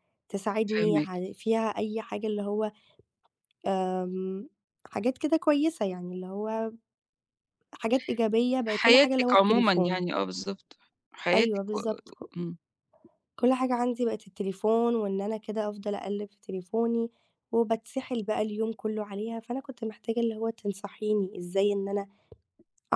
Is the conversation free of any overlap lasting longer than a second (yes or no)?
no